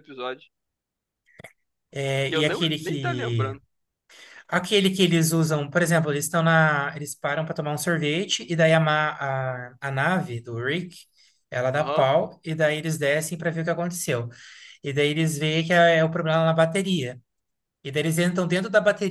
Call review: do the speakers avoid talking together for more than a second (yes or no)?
no